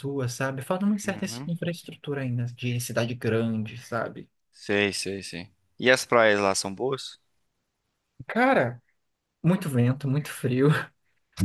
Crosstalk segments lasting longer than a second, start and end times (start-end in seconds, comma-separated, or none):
none